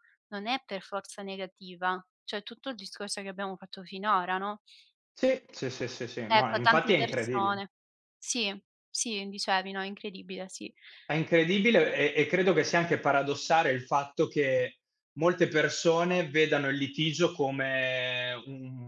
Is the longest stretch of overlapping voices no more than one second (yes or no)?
no